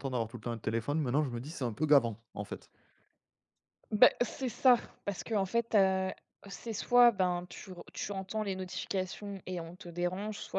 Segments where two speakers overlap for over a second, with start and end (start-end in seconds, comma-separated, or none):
none